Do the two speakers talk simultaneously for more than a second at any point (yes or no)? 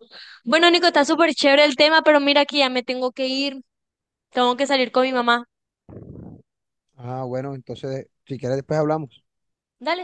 no